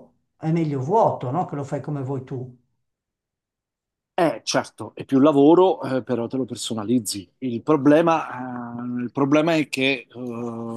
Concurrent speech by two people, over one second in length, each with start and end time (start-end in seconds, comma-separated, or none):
none